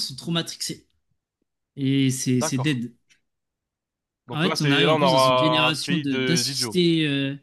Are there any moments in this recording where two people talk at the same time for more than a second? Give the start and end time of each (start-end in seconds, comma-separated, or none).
4.3-6.8